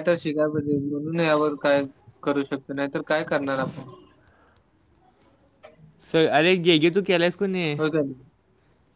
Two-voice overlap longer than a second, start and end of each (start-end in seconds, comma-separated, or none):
none